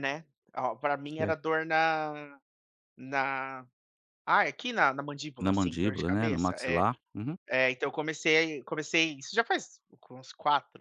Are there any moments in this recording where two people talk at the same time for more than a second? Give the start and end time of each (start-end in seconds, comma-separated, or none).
5.4-6.8